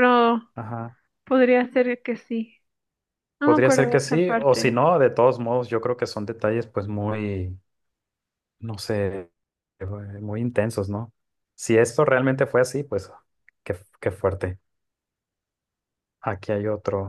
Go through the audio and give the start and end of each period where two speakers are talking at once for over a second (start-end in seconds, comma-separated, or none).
3.4-4.8